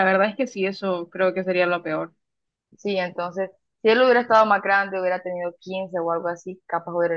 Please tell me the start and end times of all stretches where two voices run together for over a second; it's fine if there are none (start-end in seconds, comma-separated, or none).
none